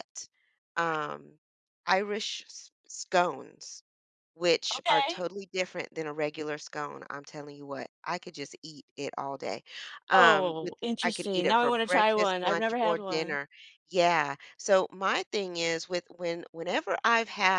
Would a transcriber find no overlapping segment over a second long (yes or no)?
no